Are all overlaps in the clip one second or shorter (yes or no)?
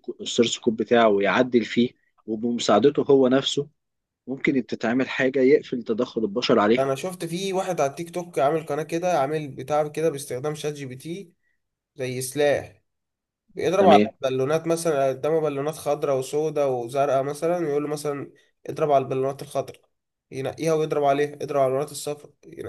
yes